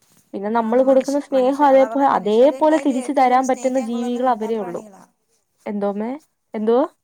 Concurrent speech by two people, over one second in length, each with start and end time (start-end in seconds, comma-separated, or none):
0.7-4.8